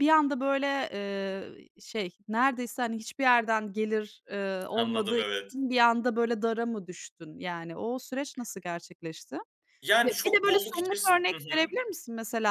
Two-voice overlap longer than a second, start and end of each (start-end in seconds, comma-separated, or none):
10.0-11.7